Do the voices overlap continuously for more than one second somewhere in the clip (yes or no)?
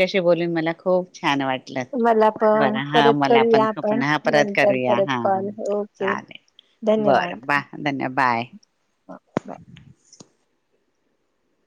yes